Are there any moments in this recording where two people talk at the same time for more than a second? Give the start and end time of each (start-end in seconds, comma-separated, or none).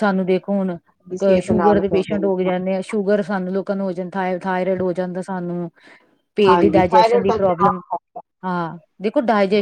1.2-2.5